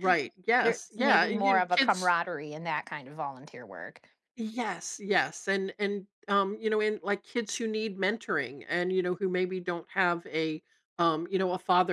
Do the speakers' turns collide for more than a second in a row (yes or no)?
yes